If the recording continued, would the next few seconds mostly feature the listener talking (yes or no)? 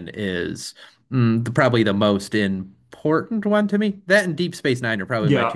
yes